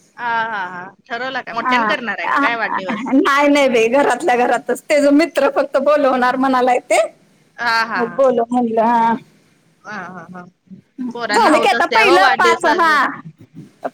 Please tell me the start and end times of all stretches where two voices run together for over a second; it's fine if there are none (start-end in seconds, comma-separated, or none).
11.4-13.0